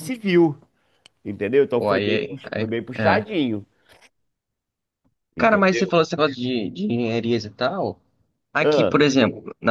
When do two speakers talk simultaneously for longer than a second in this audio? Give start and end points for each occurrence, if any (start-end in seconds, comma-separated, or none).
1.7-3.2